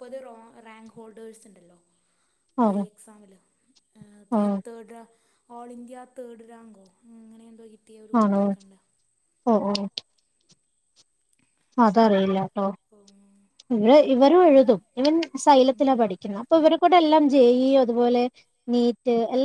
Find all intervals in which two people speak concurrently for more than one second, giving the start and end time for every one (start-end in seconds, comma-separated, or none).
none